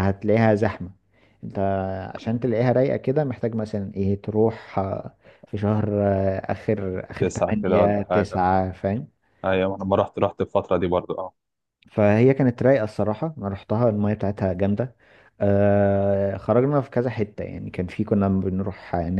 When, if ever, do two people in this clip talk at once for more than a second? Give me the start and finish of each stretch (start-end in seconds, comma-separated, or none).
7.2-8.5